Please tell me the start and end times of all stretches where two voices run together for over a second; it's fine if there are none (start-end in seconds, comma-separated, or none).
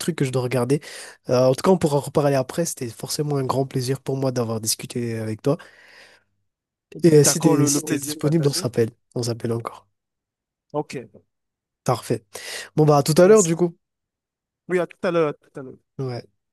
7.1-8.7